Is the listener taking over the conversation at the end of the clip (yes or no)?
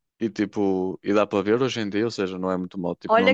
yes